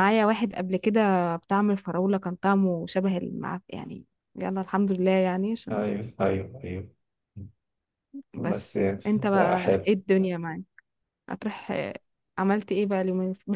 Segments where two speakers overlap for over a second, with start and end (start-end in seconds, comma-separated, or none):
8.5-10.0